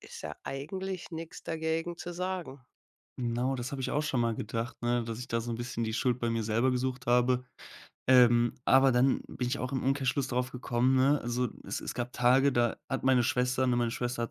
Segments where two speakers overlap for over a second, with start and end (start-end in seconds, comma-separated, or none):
none